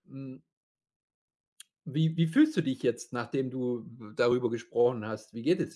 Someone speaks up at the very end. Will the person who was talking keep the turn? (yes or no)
no